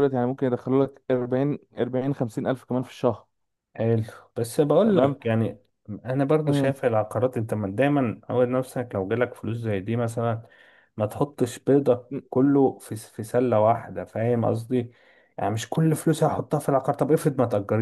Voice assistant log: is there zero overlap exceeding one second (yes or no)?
yes